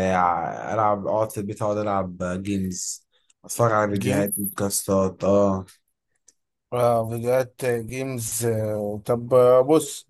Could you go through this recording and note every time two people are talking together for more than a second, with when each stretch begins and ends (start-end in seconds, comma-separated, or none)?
none